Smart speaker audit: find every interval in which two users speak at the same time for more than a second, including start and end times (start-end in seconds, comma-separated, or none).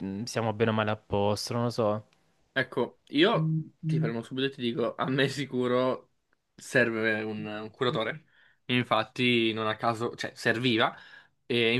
none